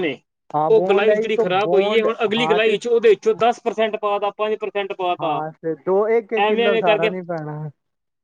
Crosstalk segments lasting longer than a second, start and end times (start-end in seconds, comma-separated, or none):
0.5-2.8